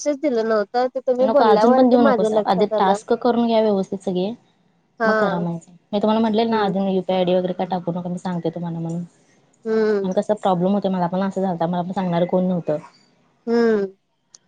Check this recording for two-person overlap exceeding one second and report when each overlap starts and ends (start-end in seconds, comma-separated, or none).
1.3-3.0